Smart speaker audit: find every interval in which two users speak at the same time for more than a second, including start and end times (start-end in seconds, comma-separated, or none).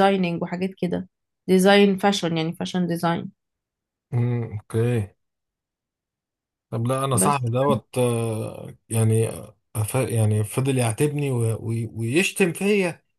none